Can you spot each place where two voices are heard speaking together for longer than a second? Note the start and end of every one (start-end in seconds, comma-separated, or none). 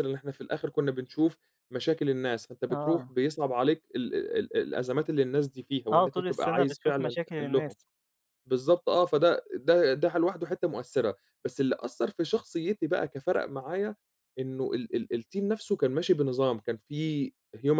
5.9-7.8